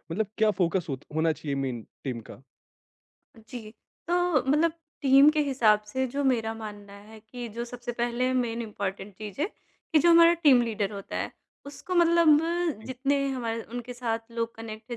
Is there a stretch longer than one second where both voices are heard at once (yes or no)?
no